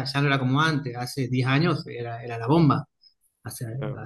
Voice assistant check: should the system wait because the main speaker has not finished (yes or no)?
no